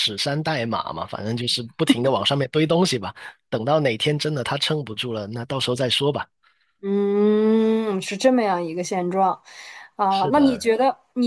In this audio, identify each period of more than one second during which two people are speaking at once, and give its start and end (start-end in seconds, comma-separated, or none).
none